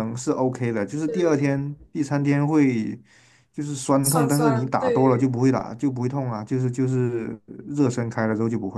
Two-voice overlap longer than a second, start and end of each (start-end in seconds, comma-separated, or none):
4.0-5.3